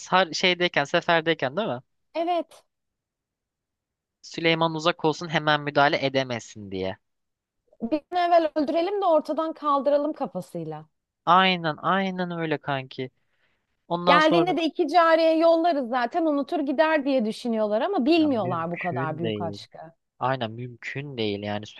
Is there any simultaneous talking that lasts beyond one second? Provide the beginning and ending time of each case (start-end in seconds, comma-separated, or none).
18.2-19.6